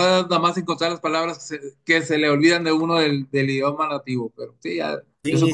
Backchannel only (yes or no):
no